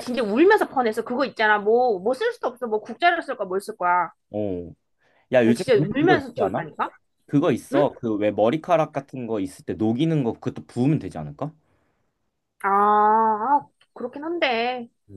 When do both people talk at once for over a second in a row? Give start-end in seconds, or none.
5.4-6.7